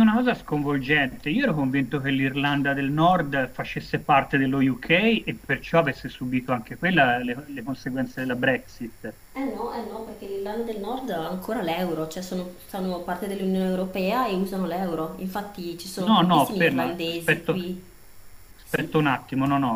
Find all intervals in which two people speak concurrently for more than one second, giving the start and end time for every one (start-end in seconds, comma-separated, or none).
16.0-17.7